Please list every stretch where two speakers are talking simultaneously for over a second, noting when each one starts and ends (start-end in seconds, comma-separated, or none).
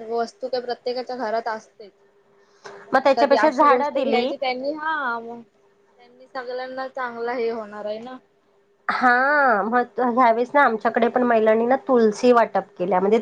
2.9-4.3